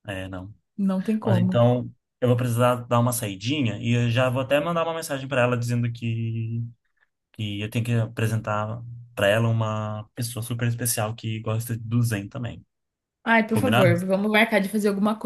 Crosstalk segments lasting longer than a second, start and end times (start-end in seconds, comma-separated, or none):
none